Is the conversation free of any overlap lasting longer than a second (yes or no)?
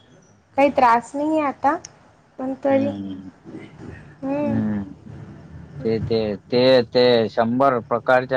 yes